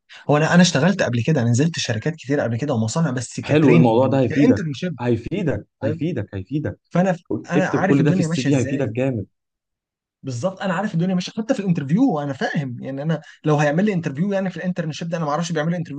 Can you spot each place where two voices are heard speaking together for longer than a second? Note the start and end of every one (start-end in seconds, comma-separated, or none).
3.4-5.0, 7.5-8.9